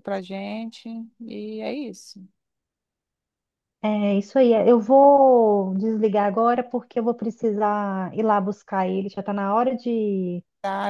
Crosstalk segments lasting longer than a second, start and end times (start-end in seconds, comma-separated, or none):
none